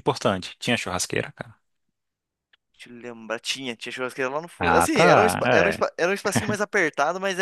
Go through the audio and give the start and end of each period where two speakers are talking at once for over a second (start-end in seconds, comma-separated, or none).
4.6-5.8